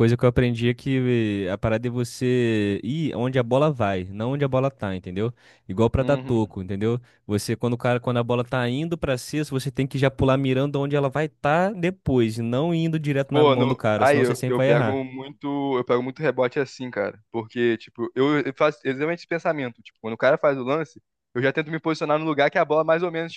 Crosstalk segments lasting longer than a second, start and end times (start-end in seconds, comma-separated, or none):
13.3-15.0